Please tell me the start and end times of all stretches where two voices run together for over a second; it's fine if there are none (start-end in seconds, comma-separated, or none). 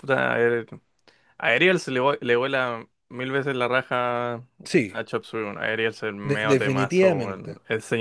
6.3-7.5